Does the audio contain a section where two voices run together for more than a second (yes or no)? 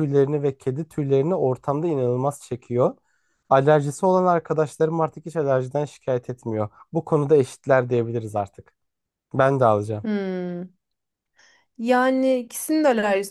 no